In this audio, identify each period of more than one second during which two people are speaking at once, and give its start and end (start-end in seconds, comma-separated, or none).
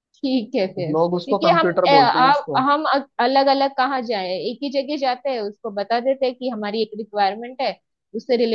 0.9-2.6